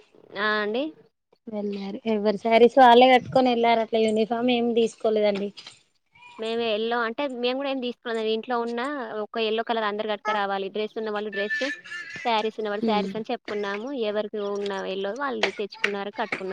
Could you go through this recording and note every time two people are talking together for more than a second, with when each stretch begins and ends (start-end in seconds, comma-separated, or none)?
none